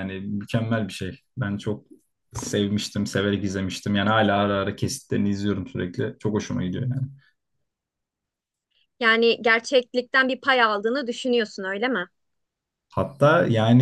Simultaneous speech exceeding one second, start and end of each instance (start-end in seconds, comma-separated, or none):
none